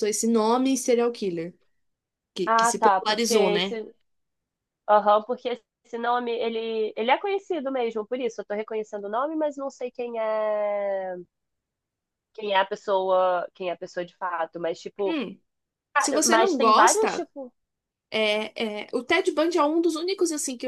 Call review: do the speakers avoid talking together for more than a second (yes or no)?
no